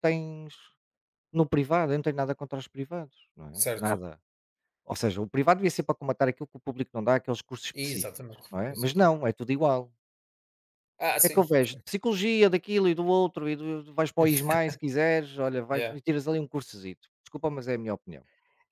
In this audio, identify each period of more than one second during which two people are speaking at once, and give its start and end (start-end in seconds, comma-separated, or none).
7.7-9.1